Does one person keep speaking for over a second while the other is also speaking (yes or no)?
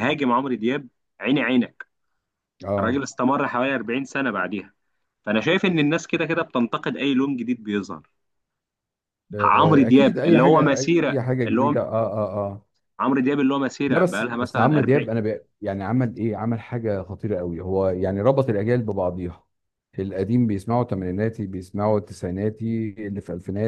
yes